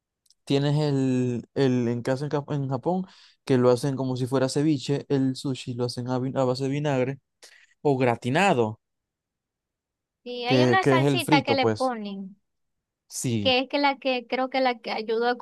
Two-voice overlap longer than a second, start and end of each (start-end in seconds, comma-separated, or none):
10.4-11.9